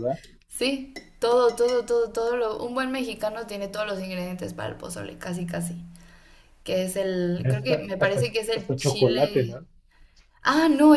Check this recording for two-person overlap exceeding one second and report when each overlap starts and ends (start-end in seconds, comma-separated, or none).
7.3-9.6